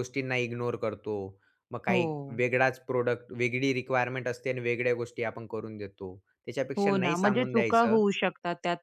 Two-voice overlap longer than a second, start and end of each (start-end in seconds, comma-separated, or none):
6.8-8.0